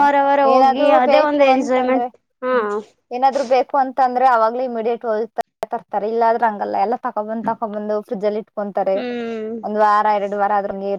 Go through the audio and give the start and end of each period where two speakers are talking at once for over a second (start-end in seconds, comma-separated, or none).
0.5-2.0